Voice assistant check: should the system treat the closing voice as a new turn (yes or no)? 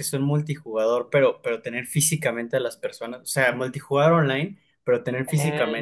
no